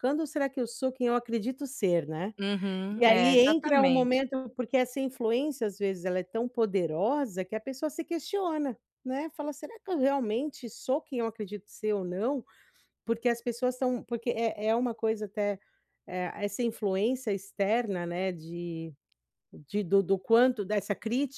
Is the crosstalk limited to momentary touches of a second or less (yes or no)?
no